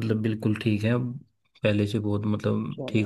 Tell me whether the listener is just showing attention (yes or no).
no